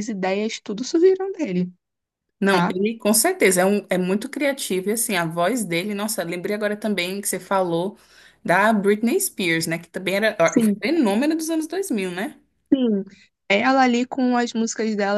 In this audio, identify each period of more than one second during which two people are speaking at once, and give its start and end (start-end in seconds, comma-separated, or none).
none